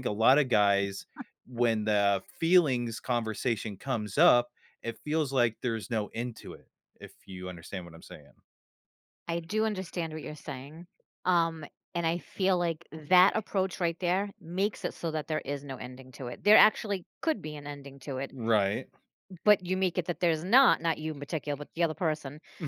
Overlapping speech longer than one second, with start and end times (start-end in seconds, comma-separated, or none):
none